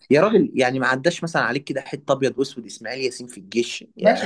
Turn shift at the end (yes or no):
yes